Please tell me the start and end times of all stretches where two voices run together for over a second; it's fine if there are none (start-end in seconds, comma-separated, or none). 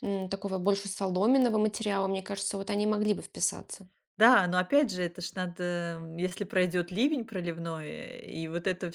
none